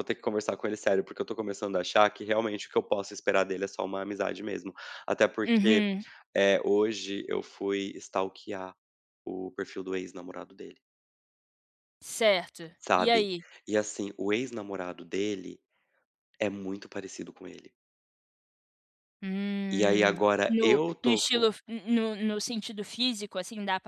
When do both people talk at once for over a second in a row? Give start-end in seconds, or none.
19.8-21.5